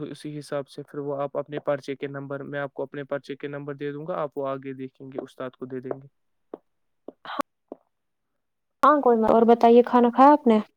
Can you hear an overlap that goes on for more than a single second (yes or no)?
no